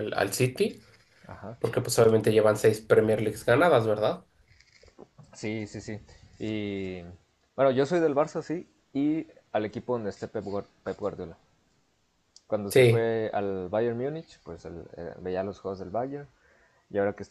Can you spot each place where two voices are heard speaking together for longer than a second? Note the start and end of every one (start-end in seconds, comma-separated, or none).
none